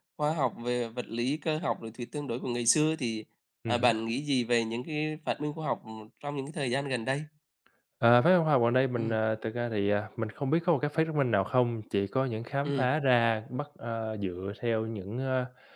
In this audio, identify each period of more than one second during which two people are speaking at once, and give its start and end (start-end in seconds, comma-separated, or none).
none